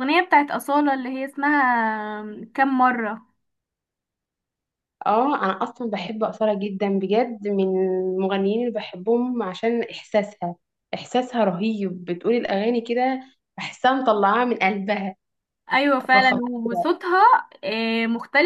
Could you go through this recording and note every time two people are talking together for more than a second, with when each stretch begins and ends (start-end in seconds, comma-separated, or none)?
none